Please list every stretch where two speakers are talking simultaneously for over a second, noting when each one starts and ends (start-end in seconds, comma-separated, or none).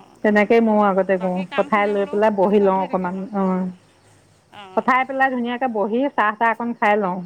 1.2-3.4